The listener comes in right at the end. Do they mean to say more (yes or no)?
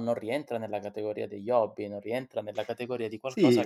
yes